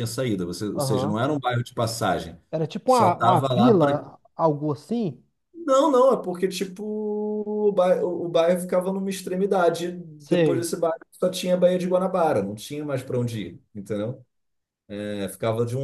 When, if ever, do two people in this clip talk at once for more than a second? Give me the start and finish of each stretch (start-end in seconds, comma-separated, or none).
2.9-4.0